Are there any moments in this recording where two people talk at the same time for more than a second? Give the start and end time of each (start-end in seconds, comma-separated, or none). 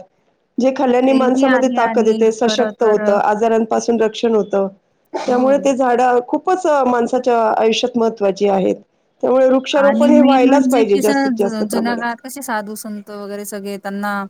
1.1-3.0, 9.9-12.3